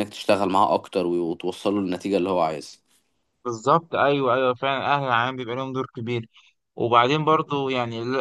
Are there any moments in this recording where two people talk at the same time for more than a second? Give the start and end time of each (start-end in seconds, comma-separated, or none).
none